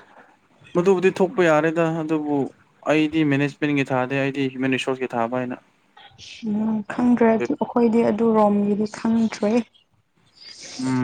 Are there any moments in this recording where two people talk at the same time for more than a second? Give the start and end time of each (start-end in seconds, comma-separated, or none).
none